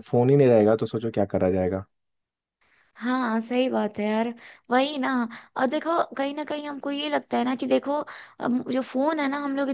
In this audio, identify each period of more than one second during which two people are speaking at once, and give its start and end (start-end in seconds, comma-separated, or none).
none